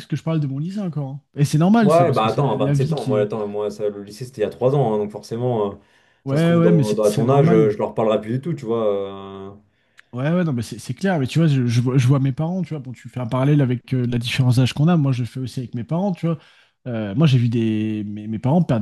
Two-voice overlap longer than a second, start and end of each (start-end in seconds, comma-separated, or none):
1.8-3.3, 6.2-7.7